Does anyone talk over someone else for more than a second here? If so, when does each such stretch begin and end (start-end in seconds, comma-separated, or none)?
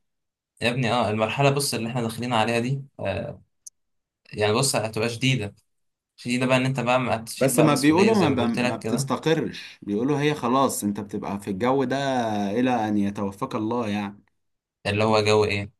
7.4-9.1